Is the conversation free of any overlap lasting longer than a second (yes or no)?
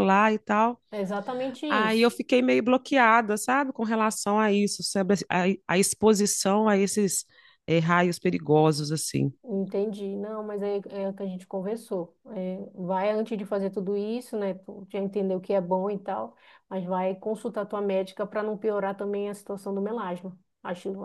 yes